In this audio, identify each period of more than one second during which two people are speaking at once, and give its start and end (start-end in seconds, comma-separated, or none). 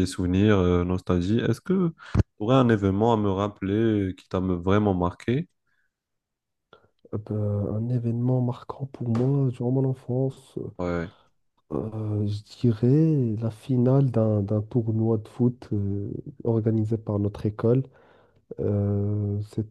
none